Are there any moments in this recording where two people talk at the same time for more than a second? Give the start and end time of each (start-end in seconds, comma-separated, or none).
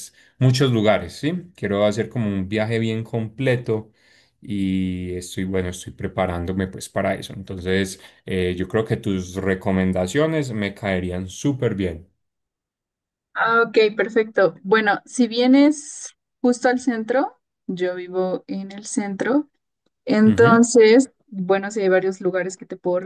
none